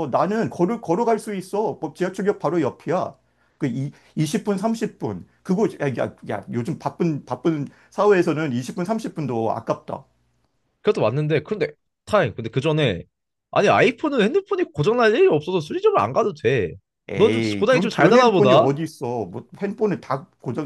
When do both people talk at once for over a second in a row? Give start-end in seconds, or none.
17.1-18.7